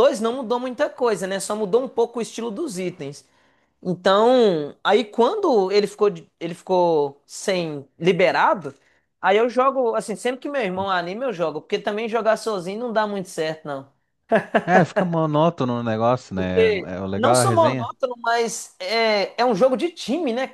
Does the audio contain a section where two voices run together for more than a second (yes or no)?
yes